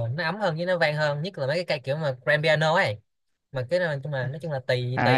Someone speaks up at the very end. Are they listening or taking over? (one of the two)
taking over